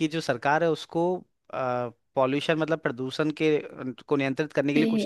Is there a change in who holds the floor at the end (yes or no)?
yes